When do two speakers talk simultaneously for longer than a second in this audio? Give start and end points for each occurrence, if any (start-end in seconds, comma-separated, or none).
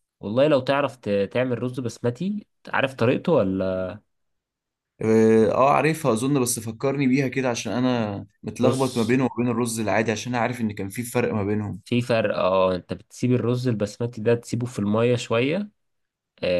none